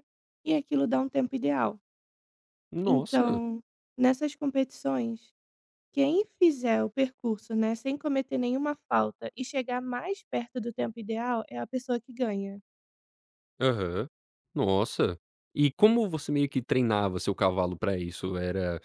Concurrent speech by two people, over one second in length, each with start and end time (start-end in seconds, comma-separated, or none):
none